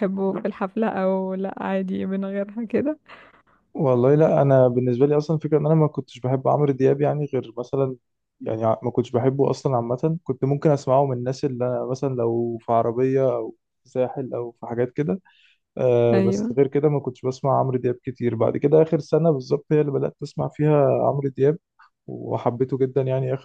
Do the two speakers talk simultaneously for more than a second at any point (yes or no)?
no